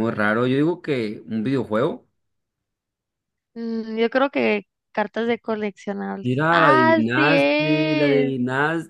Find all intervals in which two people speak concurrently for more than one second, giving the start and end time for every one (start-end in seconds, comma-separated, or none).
6.2-8.3